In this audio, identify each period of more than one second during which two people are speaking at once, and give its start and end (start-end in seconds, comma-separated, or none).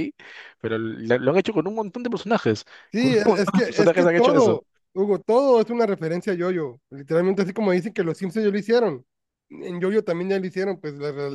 2.9-4.6